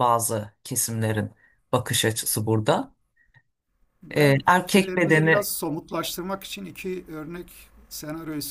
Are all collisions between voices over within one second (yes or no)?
no